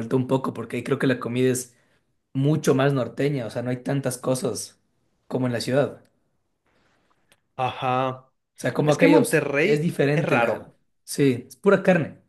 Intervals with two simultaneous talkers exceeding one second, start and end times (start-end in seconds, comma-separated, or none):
8.8-10.8